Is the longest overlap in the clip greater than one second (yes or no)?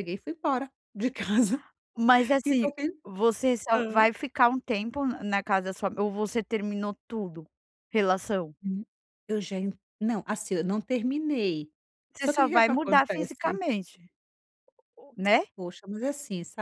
yes